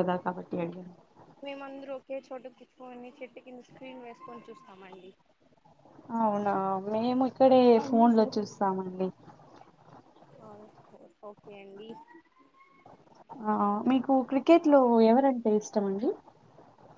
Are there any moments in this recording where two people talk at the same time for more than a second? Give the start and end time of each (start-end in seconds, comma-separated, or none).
none